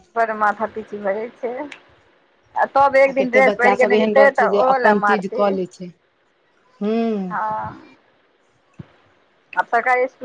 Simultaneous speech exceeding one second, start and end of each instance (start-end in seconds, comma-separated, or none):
3.1-5.5